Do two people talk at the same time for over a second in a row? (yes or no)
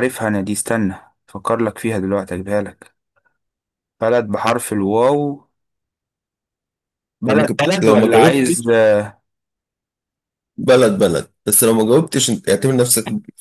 yes